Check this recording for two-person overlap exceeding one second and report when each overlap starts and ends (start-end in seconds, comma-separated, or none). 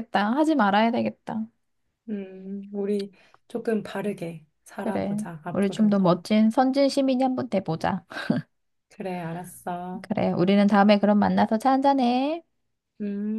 4.8-6.2